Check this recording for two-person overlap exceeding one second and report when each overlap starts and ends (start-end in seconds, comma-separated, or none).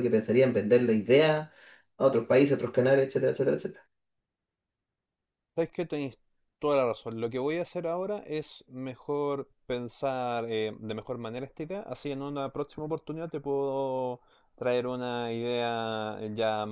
none